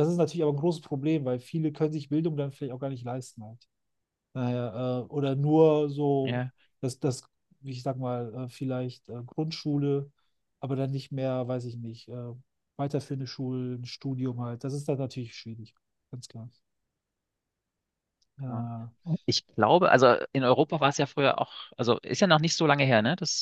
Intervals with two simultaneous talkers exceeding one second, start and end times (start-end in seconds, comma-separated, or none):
none